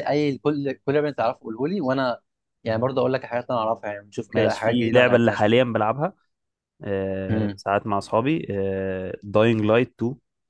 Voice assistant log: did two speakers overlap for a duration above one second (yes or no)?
yes